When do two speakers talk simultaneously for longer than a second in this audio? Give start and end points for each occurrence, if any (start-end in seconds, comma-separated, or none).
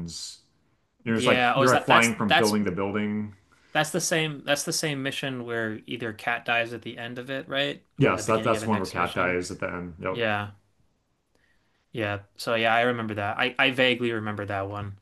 1.1-2.5, 8.0-9.4